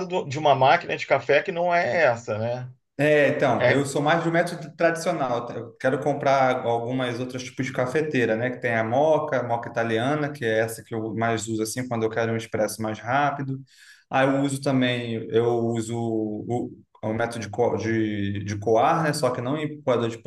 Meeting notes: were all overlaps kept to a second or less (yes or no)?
yes